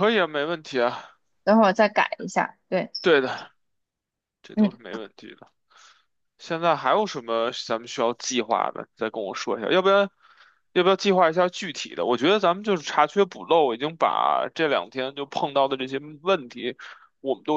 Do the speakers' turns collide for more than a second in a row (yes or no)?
no